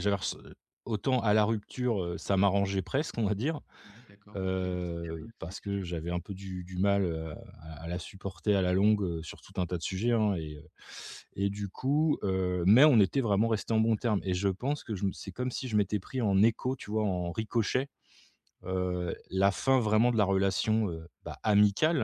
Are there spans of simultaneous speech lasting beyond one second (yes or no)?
yes